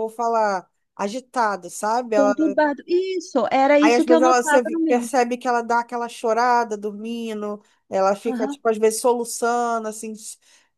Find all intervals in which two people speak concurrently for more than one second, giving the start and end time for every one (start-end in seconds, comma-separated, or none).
3.8-5.1